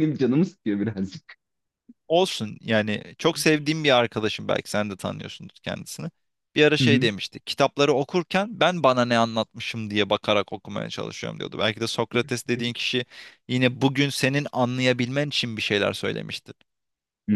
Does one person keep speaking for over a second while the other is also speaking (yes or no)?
no